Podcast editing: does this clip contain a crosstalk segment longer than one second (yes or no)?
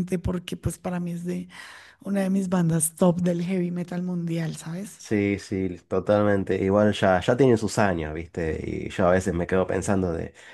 no